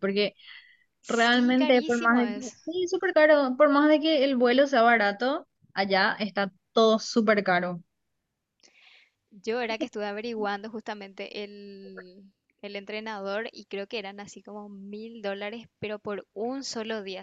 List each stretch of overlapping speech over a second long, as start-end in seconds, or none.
1.1-2.6